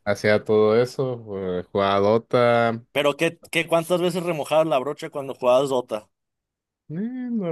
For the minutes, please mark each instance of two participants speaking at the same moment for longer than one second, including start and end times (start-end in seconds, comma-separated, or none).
none